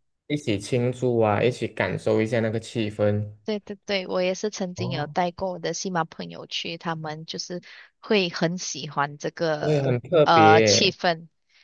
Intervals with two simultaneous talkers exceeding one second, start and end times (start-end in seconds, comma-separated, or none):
9.6-10.9